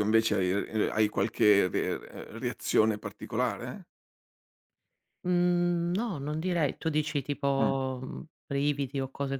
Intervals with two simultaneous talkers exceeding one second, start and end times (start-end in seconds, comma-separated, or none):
none